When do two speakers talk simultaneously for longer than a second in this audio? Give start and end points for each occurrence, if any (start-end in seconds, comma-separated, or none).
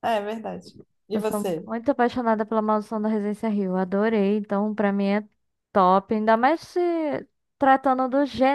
none